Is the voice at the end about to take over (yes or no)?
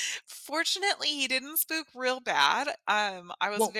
no